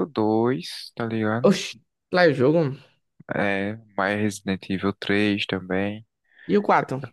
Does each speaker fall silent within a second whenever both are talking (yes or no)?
yes